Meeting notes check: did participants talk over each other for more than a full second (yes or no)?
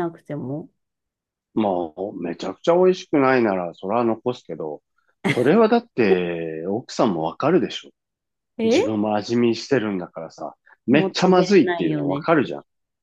yes